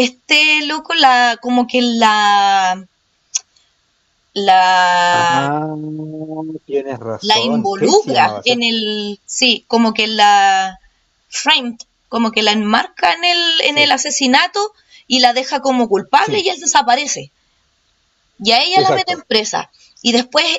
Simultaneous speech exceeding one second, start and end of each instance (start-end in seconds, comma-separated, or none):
7.2-8.7